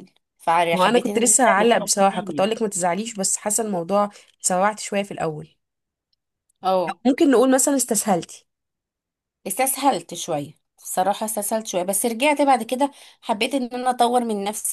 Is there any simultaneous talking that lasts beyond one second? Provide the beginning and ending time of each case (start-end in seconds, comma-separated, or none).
0.7-2.5